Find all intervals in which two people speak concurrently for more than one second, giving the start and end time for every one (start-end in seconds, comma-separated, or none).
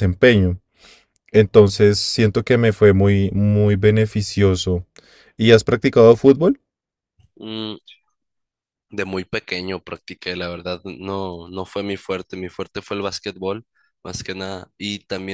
none